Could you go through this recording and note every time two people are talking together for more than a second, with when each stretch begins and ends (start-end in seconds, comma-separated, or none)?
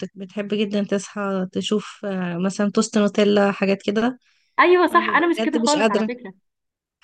4.9-6.1